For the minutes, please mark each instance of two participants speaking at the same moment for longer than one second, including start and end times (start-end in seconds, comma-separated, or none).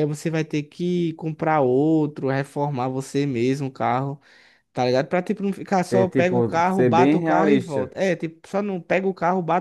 5.9-7.9